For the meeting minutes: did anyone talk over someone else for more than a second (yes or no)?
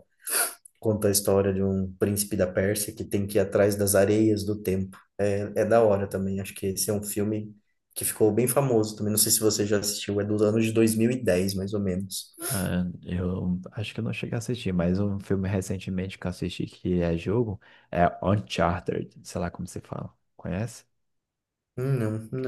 no